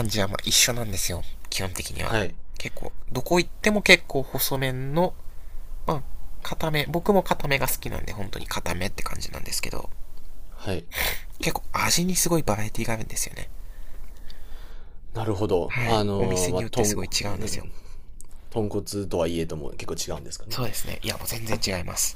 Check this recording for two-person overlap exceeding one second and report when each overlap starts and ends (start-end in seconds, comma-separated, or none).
15.7-17.7